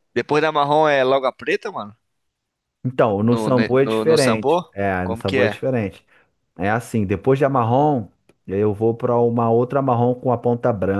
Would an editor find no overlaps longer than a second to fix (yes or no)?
no